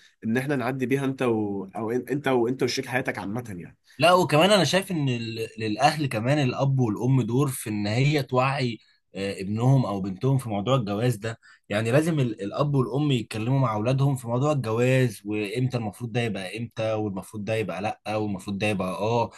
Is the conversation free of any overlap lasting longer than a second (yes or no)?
yes